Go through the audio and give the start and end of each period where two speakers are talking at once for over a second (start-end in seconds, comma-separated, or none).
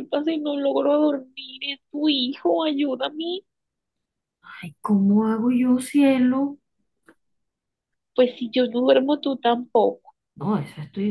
none